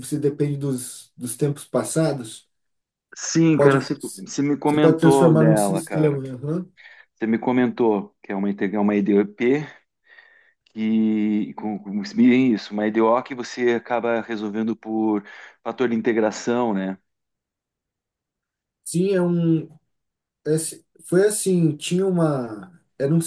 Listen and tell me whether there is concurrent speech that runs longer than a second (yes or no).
yes